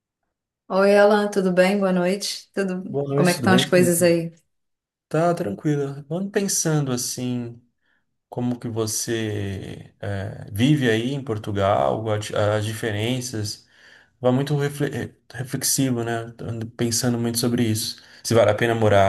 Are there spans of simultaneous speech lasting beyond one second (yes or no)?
yes